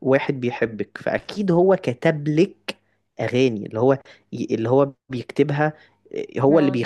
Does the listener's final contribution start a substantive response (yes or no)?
no